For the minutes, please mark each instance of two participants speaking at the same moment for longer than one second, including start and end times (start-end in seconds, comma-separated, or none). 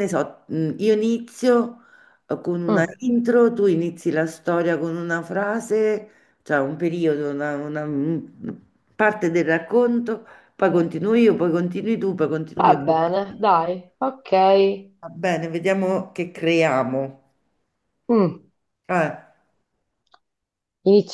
none